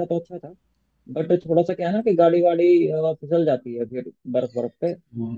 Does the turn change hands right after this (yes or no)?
no